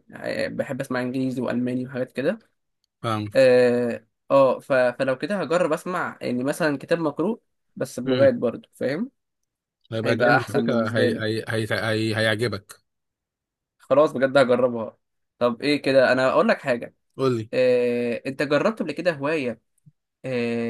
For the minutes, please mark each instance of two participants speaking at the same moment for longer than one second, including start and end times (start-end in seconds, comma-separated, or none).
10.0-11.2